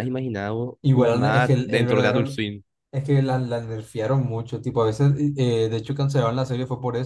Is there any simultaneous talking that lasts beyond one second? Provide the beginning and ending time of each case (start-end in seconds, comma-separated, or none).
0.8-2.4